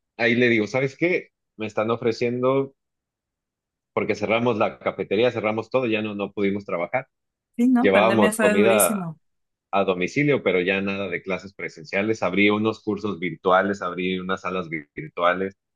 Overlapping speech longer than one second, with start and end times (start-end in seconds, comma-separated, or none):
7.8-9.1